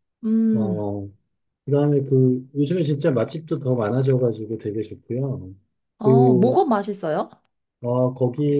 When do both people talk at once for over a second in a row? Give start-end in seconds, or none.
none